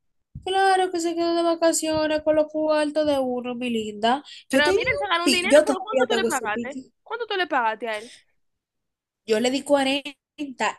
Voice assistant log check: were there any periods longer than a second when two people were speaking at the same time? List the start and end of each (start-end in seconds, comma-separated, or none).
4.5-6.9